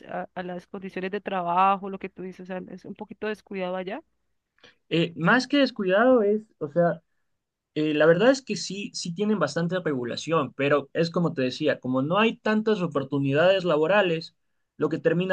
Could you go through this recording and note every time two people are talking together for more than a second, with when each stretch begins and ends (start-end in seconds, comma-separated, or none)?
none